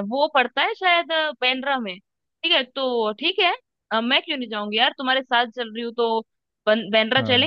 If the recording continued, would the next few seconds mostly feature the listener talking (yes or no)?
no